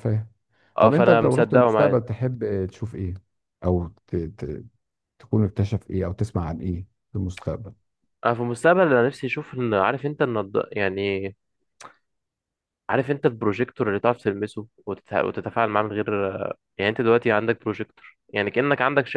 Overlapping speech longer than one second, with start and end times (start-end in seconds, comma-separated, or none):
0.8-2.0